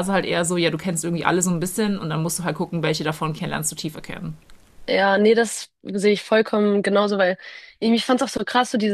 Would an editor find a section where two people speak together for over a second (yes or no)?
no